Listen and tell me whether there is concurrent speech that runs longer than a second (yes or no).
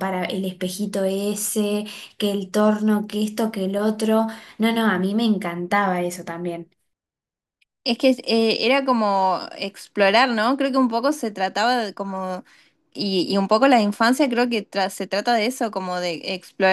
no